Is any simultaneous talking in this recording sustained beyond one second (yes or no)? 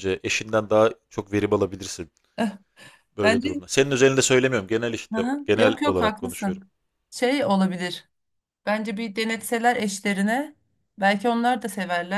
yes